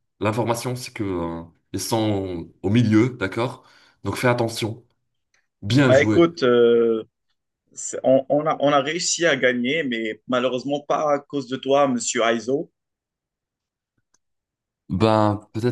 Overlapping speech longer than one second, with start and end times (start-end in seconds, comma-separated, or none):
none